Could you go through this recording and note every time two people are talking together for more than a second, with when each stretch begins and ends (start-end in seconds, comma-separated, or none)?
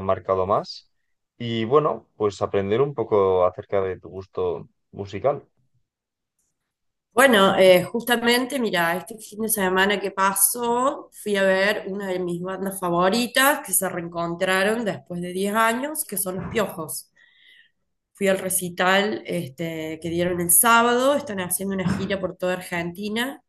none